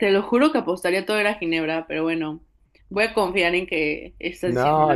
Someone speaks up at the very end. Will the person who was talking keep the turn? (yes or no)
no